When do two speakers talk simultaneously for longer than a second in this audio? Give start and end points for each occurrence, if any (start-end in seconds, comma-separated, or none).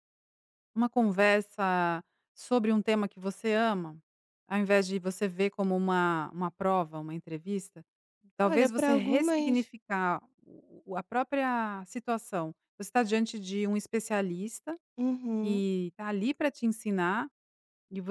8.4-9.7